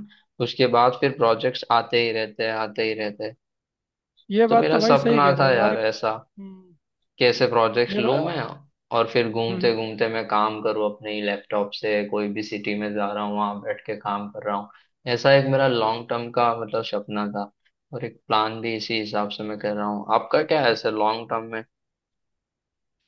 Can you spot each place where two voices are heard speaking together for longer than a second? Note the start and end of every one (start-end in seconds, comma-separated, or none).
4.5-5.9